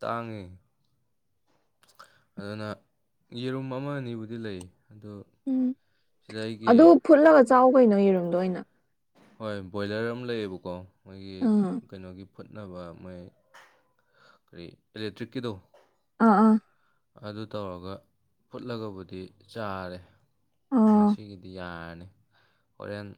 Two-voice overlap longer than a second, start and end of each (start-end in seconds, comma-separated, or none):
none